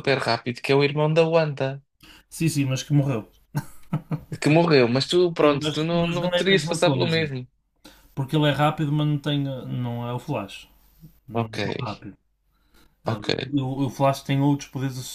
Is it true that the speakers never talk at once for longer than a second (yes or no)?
no